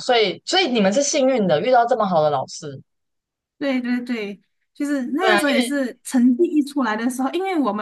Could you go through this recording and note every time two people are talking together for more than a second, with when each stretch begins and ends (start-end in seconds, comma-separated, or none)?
none